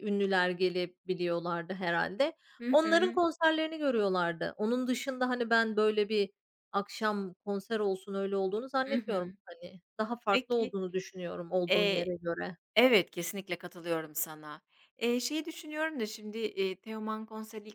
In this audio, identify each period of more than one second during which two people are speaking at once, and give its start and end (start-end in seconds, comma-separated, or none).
none